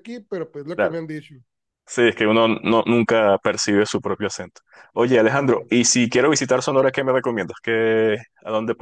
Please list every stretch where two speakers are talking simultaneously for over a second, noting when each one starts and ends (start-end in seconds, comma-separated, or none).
none